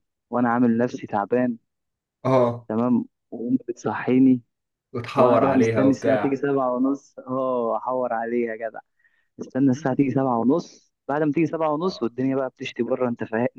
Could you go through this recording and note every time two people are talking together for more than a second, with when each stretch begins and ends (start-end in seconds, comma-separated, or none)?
5.2-6.4